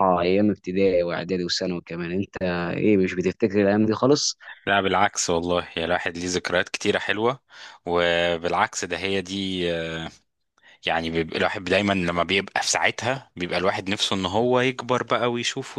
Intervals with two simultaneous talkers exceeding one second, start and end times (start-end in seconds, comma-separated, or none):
none